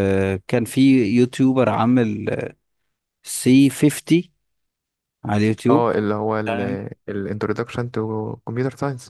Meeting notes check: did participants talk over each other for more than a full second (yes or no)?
no